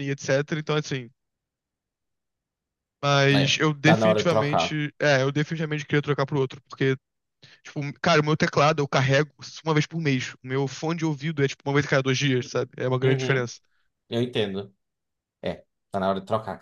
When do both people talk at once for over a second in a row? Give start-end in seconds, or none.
3.3-4.8